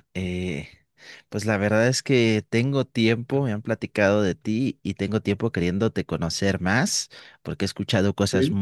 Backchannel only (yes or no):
yes